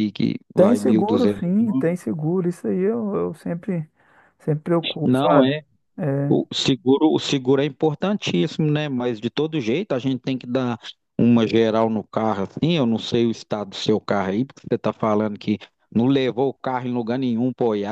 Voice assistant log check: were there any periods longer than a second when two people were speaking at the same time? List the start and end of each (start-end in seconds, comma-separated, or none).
0.6-1.9